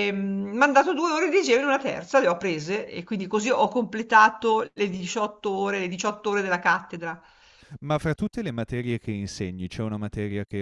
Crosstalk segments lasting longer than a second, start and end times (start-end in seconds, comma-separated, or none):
none